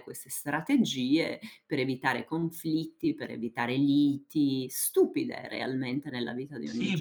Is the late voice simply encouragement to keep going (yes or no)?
no